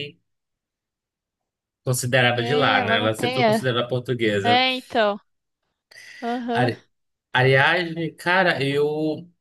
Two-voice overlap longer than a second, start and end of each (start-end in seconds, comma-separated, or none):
2.3-3.6